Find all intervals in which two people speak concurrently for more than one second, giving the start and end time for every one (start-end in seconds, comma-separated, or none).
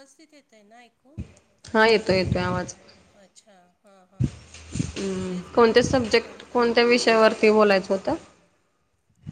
none